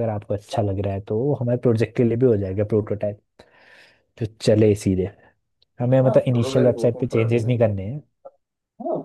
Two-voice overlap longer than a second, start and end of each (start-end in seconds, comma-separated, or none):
6.0-7.8